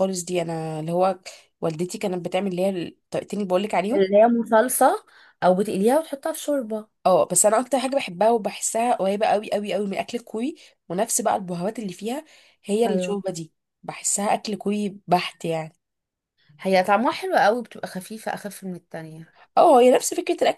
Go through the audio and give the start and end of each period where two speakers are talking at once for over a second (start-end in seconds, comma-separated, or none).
none